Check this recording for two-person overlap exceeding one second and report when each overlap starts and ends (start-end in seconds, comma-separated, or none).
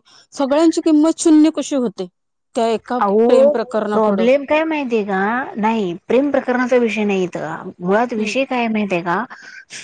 none